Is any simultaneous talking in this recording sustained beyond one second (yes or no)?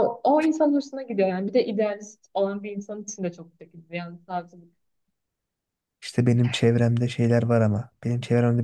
no